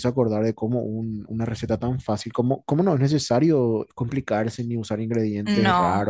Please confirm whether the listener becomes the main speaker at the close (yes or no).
no